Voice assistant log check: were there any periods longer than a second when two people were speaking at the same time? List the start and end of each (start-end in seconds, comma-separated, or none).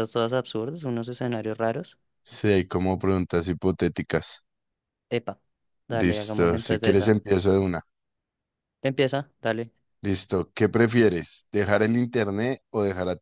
5.9-7.2